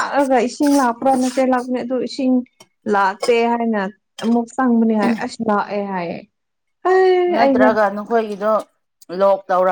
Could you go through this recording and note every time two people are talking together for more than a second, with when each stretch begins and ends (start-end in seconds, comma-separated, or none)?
none